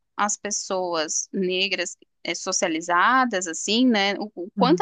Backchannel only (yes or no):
yes